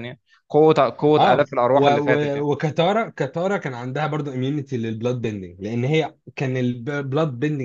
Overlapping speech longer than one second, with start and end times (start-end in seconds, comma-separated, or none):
1.2-2.5